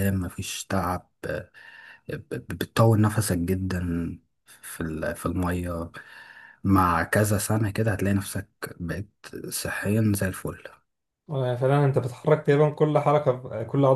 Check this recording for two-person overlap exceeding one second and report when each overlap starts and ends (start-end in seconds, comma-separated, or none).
none